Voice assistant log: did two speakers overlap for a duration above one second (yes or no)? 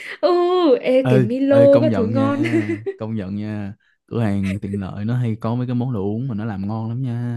yes